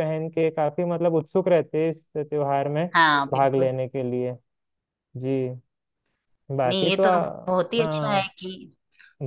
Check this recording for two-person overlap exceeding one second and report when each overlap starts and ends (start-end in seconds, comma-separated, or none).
6.7-8.3